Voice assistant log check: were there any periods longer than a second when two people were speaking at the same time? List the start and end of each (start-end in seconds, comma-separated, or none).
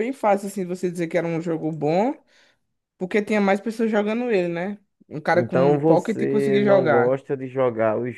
5.3-7.2